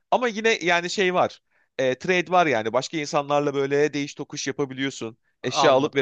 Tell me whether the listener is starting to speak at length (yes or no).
yes